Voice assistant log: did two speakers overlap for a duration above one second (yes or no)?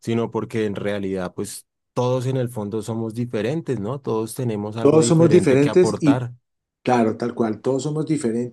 yes